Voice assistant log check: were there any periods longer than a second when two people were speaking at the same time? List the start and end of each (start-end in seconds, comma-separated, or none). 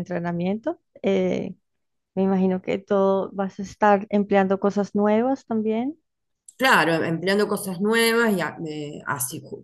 none